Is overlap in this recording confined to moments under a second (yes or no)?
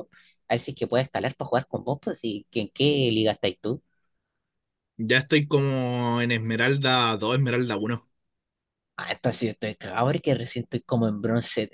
yes